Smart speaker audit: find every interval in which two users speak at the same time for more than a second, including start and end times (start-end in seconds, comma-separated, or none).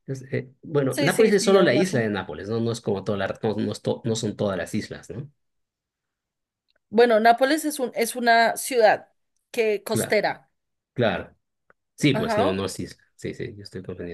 0.9-2.1